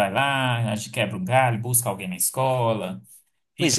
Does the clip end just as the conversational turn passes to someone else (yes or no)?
yes